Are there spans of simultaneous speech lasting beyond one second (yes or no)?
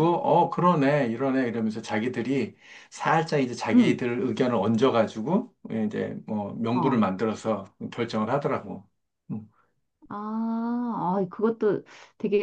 no